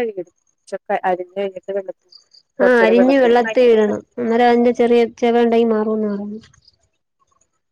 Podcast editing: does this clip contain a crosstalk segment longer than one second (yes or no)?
no